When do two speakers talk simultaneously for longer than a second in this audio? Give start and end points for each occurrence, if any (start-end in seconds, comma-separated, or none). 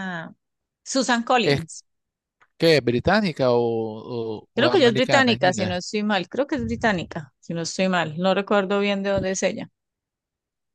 4.5-5.8